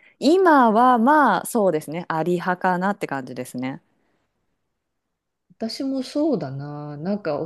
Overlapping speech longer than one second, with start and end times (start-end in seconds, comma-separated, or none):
none